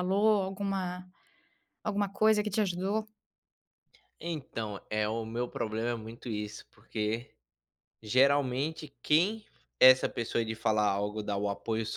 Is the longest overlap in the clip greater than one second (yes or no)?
no